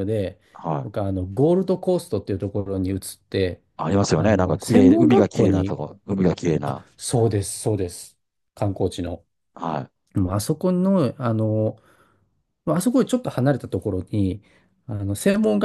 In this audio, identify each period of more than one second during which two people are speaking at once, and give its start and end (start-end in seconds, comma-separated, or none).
4.2-5.8